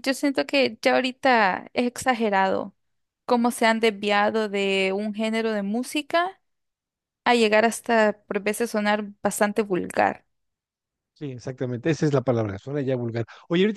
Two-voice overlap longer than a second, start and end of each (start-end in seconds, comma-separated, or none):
none